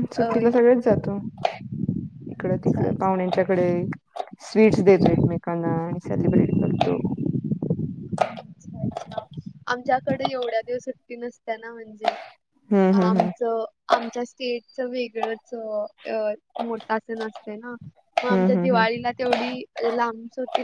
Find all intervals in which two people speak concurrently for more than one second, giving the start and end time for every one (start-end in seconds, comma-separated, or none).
none